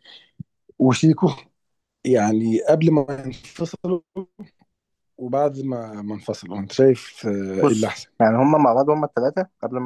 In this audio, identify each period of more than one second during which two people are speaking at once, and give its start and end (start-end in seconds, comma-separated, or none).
none